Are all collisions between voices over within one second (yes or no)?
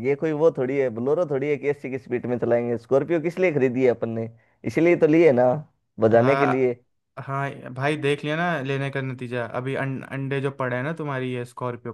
yes